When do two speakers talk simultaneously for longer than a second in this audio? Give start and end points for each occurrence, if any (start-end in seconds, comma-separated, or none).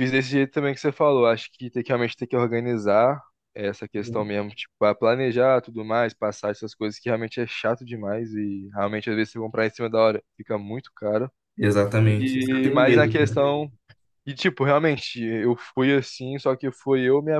12.0-13.4